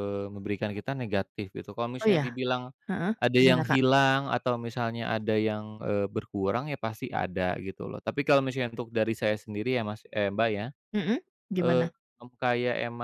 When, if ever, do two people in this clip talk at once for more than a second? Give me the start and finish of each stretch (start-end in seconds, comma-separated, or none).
none